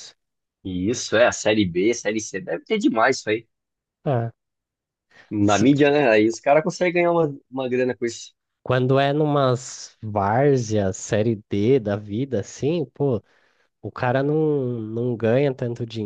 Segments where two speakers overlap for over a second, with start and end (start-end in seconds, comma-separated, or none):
none